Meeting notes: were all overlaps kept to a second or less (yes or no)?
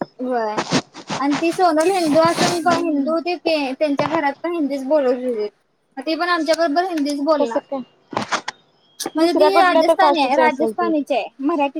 no